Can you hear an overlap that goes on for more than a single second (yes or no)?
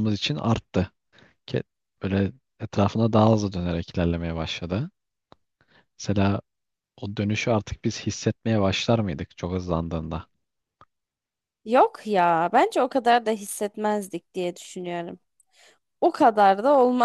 no